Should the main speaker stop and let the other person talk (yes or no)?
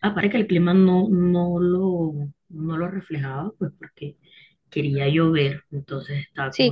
yes